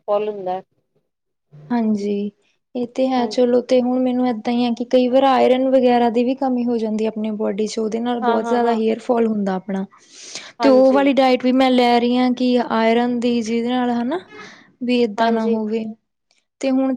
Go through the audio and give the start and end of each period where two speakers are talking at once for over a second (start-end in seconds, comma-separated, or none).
none